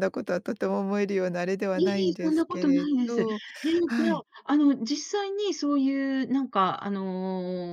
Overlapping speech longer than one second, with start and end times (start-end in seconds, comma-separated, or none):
1.8-3.3